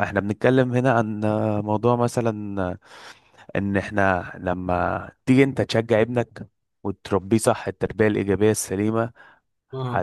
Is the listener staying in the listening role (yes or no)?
yes